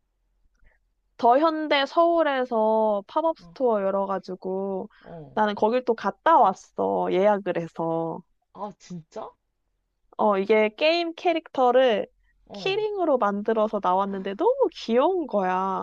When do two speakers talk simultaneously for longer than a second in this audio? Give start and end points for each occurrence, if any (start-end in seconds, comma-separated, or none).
none